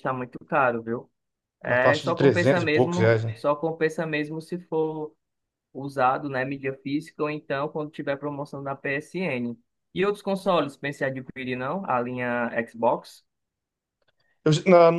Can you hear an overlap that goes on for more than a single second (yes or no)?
yes